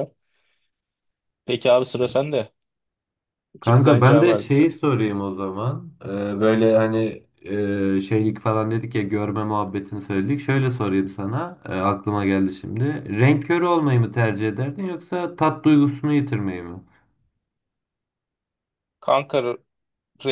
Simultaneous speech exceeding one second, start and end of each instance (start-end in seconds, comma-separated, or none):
3.6-4.8